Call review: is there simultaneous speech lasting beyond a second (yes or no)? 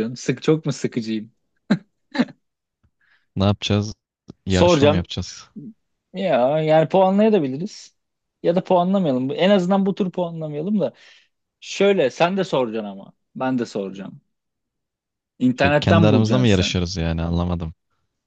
yes